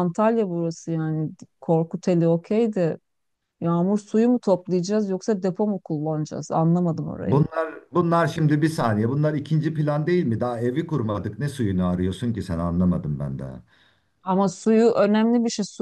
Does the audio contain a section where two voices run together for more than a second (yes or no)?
no